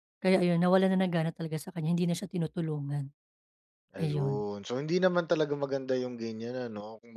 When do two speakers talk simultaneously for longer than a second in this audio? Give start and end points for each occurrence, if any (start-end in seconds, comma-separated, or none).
none